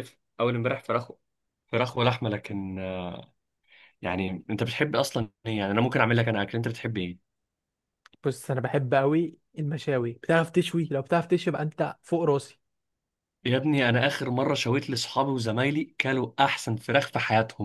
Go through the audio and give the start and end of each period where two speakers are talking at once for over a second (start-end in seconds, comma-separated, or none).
none